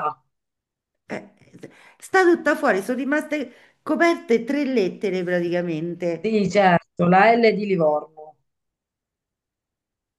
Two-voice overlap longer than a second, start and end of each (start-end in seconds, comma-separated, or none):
none